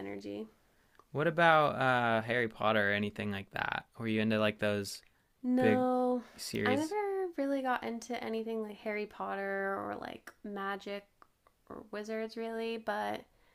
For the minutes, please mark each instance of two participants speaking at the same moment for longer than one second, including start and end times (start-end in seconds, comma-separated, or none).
none